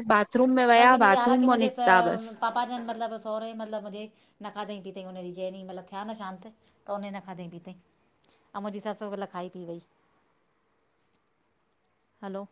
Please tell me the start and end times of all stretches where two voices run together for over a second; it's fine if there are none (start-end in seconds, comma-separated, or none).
0.8-2.4